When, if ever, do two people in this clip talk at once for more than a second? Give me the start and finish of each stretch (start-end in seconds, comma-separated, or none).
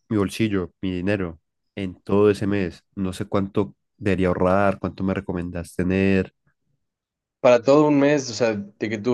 none